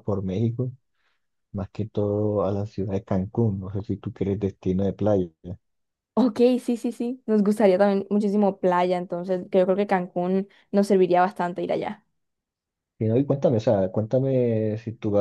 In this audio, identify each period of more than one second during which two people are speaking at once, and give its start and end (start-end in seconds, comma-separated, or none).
none